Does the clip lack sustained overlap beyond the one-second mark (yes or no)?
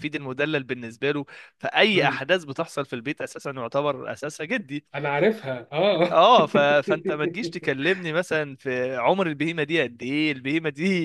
yes